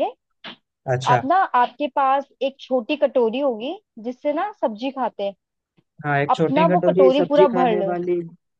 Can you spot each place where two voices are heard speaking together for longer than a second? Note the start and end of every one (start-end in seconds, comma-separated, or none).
6.4-7.9